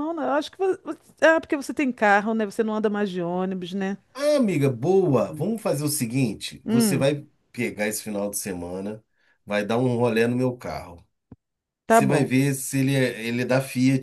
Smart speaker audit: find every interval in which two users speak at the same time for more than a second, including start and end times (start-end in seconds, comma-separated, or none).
none